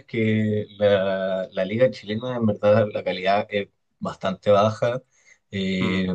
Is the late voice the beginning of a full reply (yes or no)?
no